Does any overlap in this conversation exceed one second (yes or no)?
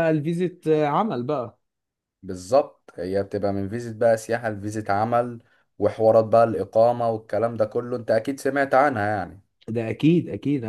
no